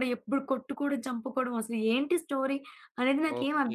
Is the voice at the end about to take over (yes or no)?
yes